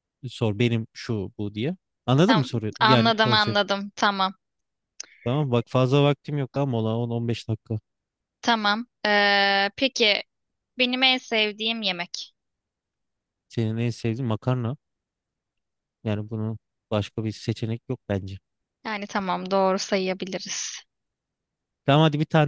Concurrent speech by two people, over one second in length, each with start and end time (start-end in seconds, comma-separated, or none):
2.3-3.6